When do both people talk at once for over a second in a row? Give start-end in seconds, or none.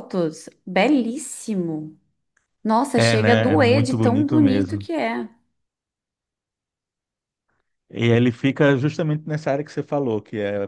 2.9-4.9